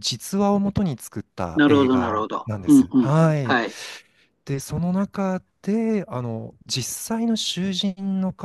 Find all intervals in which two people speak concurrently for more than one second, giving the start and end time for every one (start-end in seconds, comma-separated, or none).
1.6-3.6